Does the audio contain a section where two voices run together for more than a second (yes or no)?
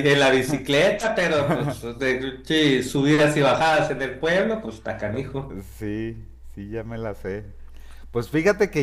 no